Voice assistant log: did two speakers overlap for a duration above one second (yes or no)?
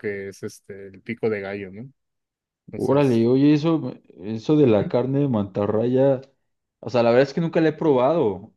no